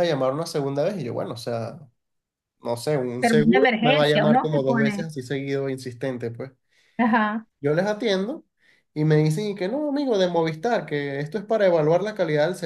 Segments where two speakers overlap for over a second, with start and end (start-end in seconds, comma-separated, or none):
3.2-5.1